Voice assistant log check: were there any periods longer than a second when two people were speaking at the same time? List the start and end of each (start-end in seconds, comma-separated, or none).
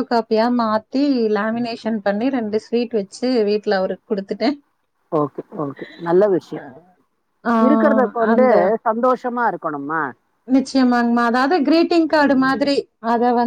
none